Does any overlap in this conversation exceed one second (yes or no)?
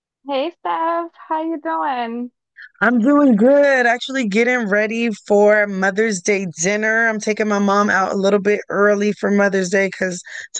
no